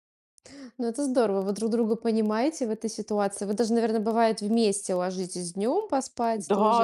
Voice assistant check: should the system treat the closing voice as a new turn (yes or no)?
yes